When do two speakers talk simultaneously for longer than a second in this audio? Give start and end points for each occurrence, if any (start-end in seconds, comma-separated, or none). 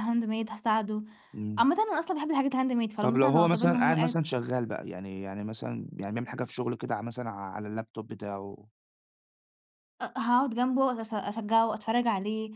3.0-4.2